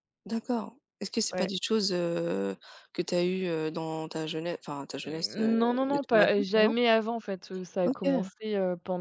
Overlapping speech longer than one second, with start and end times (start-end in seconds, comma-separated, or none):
5.0-6.7